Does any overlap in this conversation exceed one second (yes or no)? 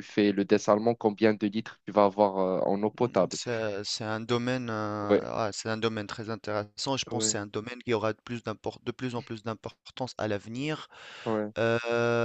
no